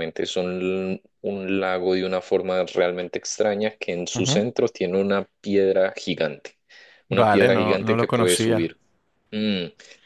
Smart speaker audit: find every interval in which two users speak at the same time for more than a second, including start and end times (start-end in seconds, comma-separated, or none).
7.1-8.7